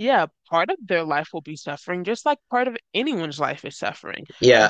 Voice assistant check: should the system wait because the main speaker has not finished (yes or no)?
no